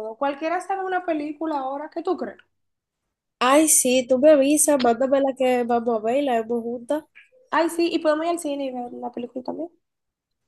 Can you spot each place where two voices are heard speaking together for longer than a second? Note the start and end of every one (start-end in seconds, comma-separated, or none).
none